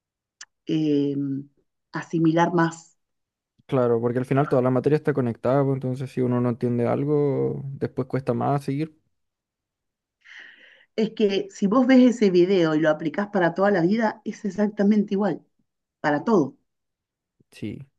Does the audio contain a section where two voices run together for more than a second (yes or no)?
no